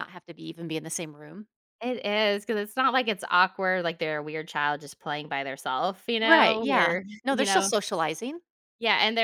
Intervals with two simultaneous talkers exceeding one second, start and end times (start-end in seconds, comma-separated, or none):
6.2-7.7